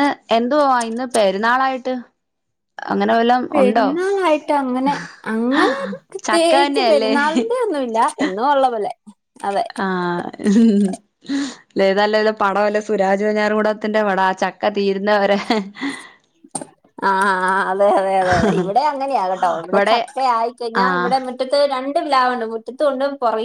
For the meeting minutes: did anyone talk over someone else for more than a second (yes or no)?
yes